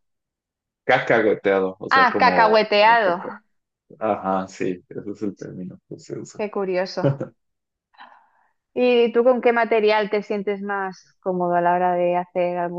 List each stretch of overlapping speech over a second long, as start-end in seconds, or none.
1.9-3.2